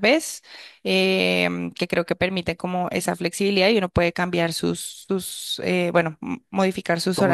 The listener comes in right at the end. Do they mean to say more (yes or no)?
yes